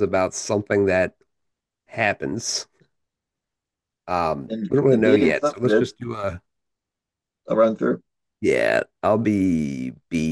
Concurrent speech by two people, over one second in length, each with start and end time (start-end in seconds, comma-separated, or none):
4.5-5.9